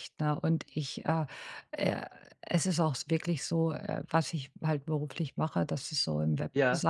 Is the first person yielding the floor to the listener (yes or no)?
no